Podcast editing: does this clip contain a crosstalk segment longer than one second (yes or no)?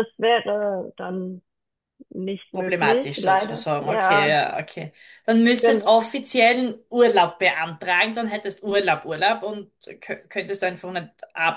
yes